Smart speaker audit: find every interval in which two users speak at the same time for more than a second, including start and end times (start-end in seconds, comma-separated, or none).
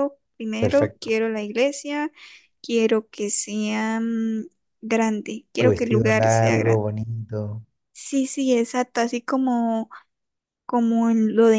5.6-6.8